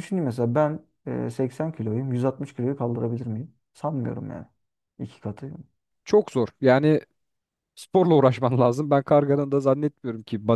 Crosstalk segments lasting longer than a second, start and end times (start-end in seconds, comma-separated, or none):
none